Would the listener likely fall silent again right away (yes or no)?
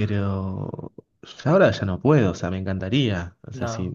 yes